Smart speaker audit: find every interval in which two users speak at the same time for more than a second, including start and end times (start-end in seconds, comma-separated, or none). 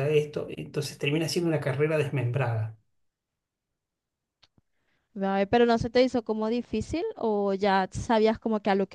none